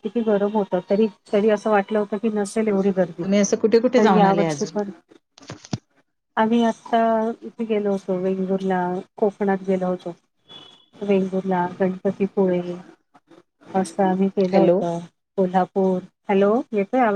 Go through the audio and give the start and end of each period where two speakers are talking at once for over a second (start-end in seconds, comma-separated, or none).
3.2-4.8